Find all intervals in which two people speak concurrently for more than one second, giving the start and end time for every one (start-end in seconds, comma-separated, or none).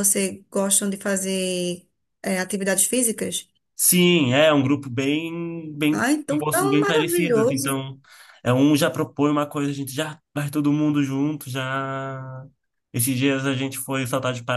5.9-7.8